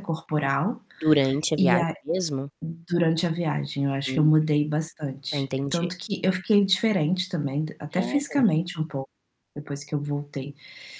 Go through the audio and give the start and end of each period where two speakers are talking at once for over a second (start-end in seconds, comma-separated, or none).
none